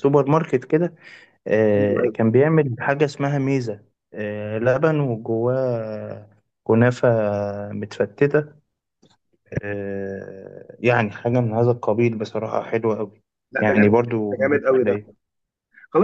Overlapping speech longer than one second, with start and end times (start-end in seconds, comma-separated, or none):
13.6-15.0